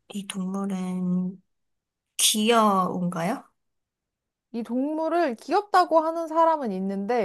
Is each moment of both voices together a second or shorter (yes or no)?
yes